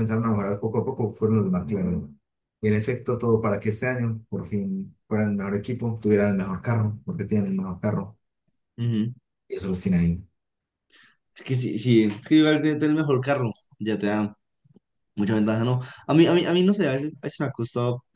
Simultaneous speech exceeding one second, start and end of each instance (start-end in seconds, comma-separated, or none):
none